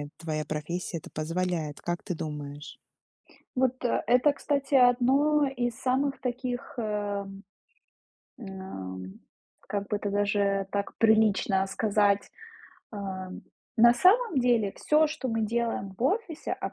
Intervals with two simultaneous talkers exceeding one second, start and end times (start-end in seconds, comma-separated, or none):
none